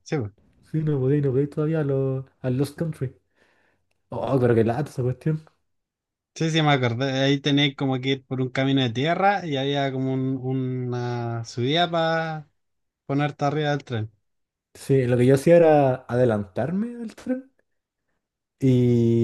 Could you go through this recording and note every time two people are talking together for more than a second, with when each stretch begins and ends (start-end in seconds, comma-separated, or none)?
none